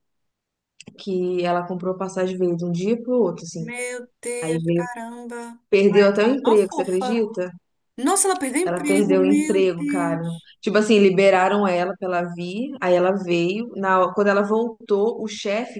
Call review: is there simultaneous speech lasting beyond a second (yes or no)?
yes